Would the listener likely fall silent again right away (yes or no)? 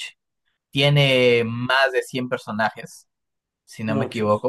yes